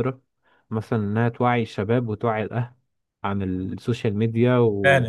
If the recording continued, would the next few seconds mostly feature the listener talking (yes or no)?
yes